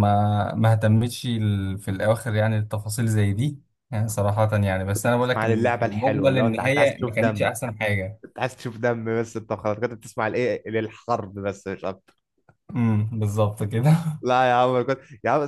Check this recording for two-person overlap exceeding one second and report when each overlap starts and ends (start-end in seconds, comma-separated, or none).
4.9-7.5